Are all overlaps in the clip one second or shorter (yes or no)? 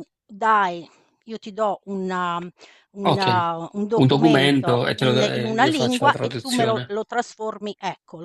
no